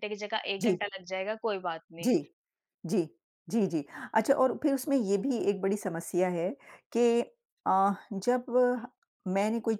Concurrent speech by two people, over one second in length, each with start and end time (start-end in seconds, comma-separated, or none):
none